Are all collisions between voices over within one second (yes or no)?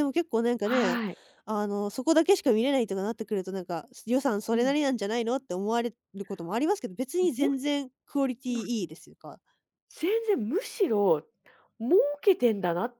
yes